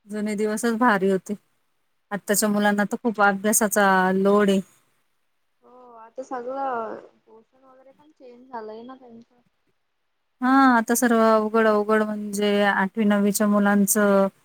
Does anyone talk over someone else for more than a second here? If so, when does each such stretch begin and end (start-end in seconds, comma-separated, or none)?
none